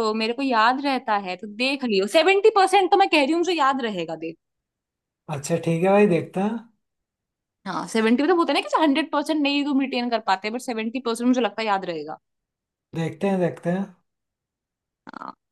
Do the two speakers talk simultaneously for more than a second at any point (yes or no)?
no